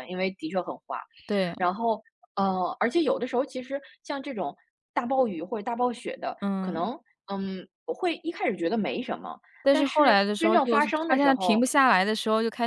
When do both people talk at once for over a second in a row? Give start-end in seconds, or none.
9.6-11.7